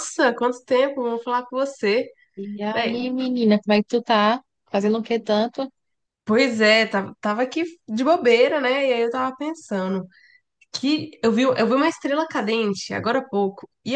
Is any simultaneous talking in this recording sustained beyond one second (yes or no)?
no